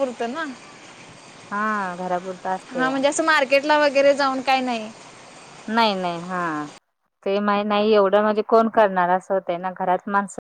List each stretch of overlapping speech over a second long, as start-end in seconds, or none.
none